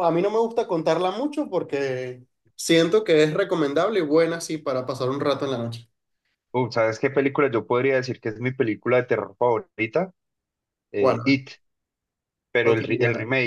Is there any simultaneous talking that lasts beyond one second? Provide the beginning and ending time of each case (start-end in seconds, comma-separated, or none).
none